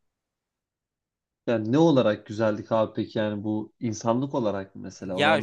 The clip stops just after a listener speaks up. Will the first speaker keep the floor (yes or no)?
no